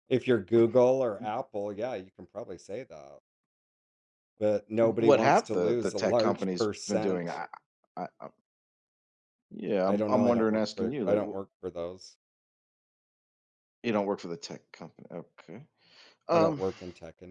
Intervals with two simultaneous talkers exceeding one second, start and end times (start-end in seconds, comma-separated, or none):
4.8-7.4, 9.9-11.4